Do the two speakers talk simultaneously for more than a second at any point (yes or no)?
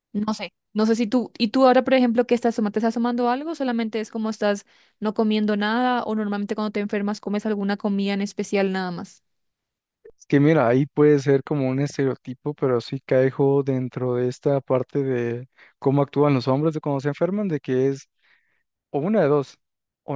no